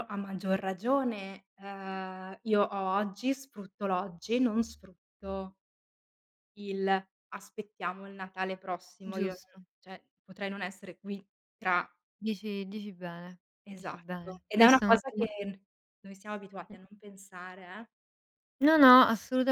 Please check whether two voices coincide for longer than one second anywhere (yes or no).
yes